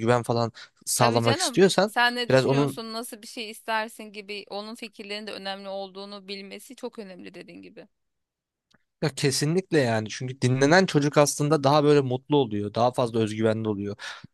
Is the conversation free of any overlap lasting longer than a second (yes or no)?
no